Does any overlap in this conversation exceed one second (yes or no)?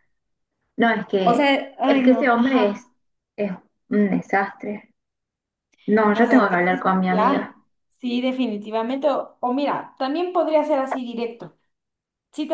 yes